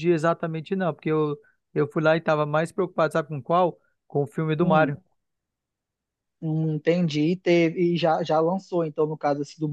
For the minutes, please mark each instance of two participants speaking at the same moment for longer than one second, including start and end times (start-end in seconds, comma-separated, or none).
none